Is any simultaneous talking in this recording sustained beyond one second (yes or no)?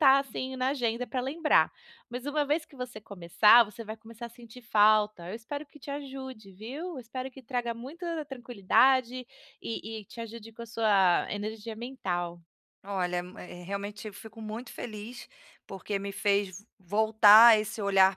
no